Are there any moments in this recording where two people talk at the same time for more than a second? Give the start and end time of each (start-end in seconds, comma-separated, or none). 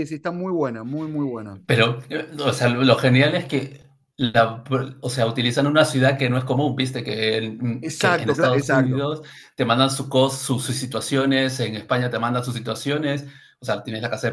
7.8-9.1